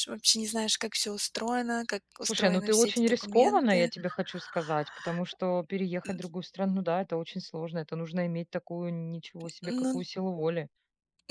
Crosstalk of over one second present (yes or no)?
yes